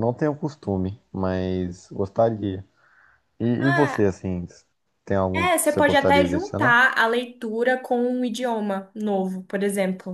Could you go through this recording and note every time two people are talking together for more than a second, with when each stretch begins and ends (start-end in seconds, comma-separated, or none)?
5.3-6.8